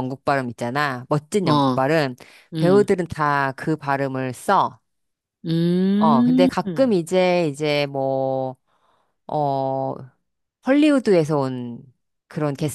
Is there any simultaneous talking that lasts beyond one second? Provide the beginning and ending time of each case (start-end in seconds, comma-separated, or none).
none